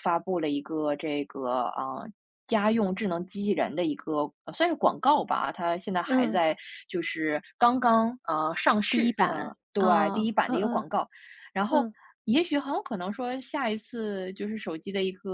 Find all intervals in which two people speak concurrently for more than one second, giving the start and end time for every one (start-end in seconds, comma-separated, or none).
8.9-10.8